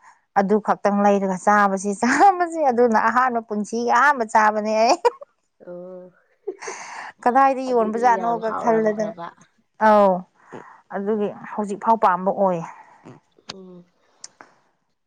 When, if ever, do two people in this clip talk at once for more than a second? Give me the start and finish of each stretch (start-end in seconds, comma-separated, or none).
7.7-9.1